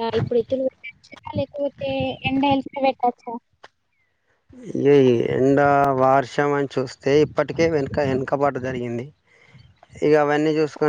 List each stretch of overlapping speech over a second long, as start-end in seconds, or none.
none